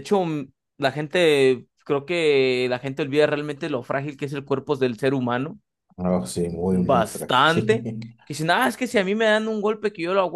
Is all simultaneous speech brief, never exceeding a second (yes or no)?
no